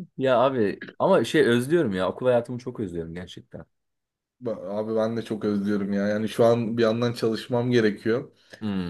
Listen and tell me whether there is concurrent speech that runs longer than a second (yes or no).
no